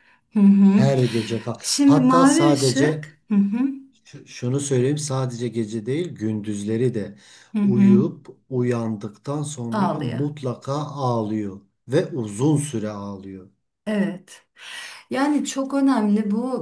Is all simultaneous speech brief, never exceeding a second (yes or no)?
no